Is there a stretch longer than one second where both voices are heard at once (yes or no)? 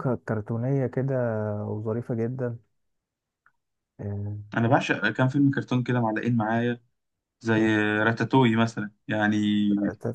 no